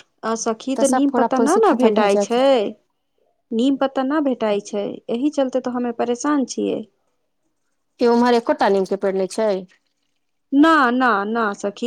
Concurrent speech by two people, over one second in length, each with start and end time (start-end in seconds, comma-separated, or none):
none